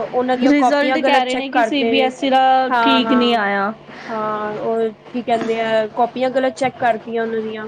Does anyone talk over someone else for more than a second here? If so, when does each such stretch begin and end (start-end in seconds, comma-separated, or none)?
0.5-2.1